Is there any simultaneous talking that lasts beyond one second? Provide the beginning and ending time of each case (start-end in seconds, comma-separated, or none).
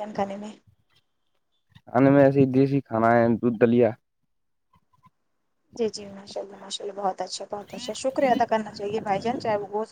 none